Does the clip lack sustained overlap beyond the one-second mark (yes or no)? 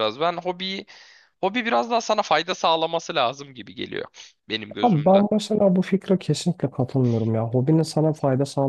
yes